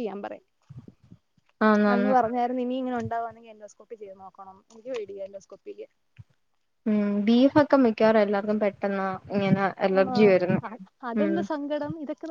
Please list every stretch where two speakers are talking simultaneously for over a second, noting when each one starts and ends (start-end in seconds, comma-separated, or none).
none